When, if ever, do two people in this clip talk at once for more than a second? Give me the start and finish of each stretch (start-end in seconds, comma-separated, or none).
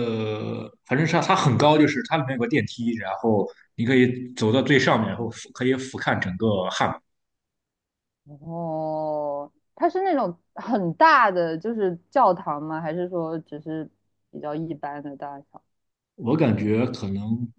none